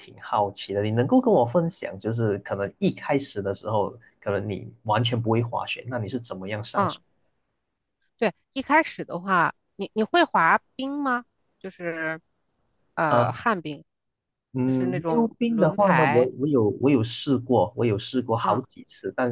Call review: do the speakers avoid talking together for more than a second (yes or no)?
no